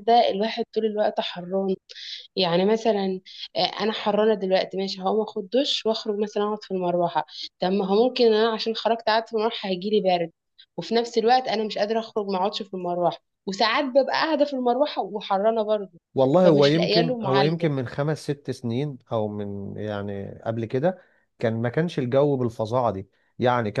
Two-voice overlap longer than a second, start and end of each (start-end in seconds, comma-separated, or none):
16.4-17.7